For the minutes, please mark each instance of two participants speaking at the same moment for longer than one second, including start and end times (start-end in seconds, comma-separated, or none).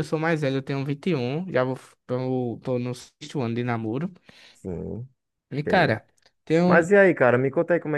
none